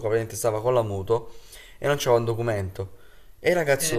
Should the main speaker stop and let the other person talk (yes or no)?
no